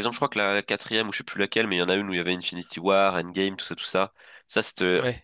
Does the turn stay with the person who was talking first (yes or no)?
yes